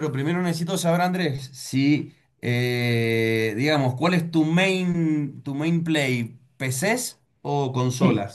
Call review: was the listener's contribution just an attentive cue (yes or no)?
no